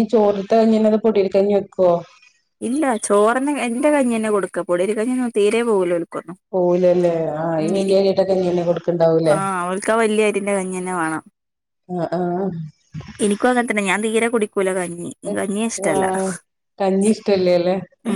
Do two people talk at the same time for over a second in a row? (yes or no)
no